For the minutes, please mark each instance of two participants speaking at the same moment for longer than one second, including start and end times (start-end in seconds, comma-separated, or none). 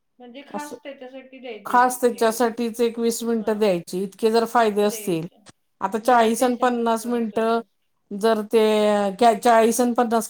6.1-7.6